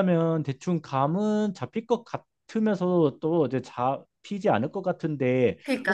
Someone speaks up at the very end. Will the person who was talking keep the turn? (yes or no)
no